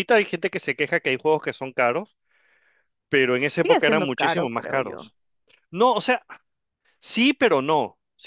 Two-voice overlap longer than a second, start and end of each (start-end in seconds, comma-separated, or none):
3.6-5.1